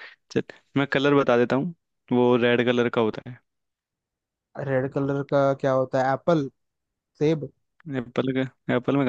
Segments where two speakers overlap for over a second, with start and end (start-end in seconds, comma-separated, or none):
none